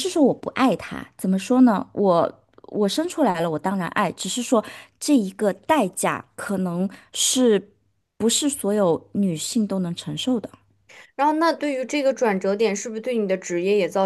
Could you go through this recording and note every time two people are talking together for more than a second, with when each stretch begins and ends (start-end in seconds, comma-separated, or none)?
none